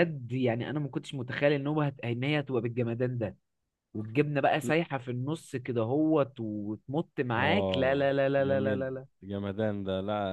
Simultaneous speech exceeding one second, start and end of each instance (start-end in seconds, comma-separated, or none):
7.4-8.9